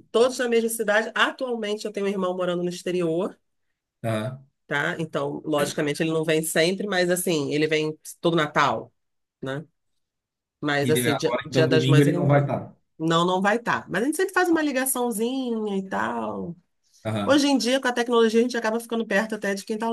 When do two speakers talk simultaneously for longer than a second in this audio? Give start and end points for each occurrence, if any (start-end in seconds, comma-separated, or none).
10.8-12.4